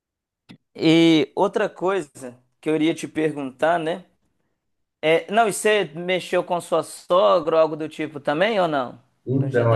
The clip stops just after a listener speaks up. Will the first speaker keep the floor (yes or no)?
no